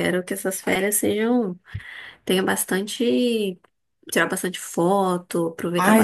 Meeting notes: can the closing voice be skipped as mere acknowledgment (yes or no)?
no